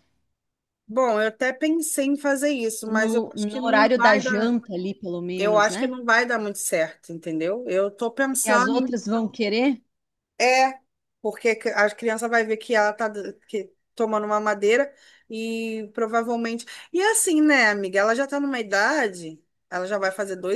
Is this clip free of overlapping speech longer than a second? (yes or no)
no